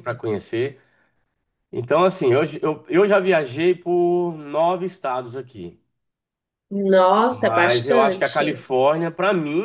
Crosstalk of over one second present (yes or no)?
yes